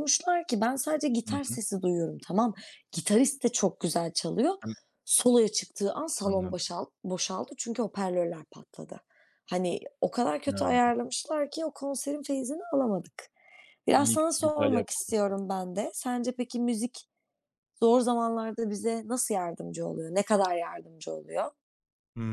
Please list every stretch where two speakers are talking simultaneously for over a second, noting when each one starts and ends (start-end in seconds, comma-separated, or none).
14.0-15.3